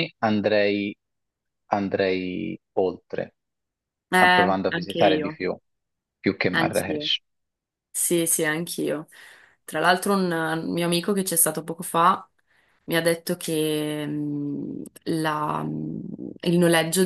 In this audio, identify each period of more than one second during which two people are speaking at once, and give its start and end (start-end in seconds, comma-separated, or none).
4.2-5.4